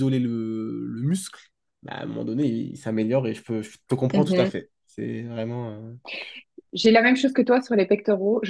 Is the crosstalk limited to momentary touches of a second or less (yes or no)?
yes